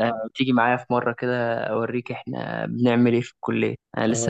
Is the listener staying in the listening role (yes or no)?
no